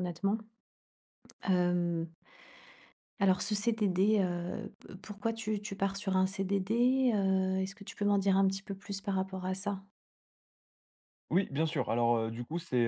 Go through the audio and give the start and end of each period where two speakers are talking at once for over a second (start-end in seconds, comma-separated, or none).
none